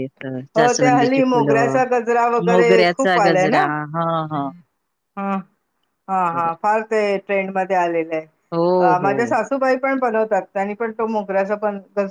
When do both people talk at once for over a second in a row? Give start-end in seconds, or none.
0.6-1.8